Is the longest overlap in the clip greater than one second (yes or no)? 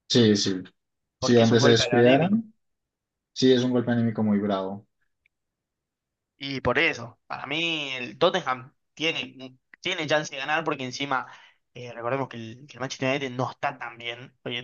yes